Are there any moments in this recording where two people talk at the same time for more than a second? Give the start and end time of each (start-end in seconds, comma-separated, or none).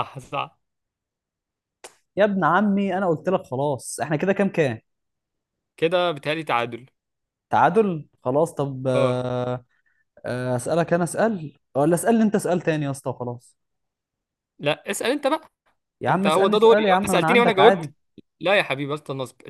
16.1-17.9